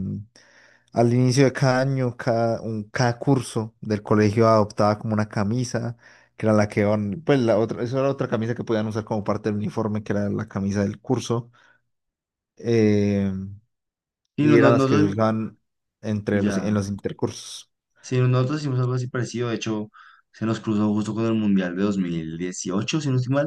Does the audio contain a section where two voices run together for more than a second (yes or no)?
no